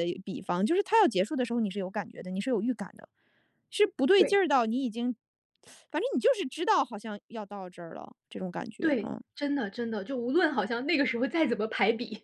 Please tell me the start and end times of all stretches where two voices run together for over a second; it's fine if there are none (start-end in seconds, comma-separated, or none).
none